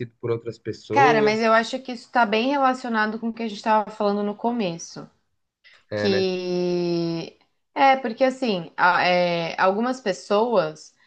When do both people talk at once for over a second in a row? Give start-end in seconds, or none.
none